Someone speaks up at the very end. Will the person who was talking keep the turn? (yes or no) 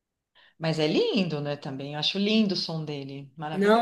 no